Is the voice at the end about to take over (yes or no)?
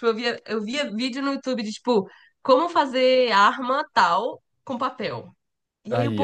no